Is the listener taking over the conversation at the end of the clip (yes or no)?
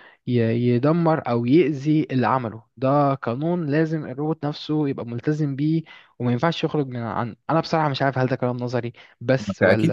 yes